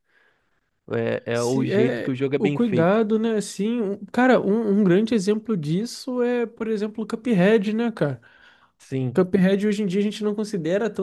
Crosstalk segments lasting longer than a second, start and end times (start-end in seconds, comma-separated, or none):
1.3-3.0